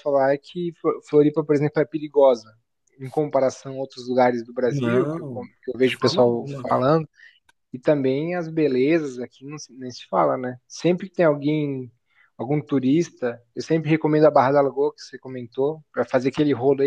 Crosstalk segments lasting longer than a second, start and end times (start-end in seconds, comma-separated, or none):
4.6-6.7